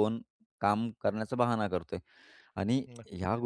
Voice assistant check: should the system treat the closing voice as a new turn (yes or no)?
no